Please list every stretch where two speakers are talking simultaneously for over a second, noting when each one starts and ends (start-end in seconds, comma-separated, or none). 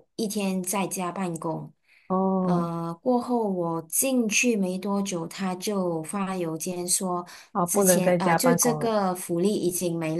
7.7-8.9